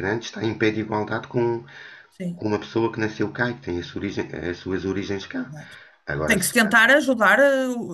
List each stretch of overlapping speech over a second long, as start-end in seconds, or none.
none